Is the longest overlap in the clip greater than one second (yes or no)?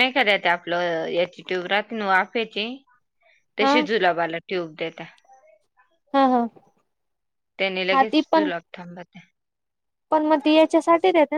no